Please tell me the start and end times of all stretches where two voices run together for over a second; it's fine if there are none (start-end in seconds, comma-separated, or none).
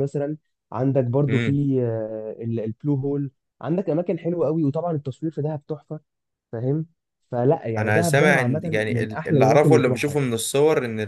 7.8-10.2